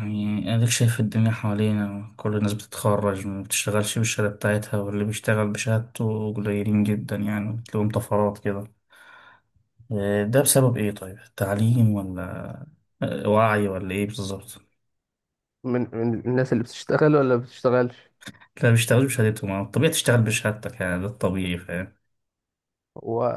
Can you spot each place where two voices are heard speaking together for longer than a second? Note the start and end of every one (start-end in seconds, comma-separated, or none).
none